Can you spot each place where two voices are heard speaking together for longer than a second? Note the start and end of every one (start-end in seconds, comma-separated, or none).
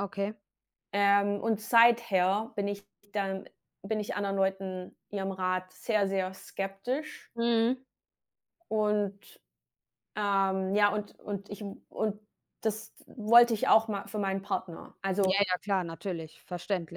none